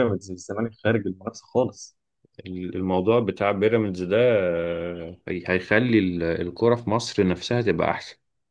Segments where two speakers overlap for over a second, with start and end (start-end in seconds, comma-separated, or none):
none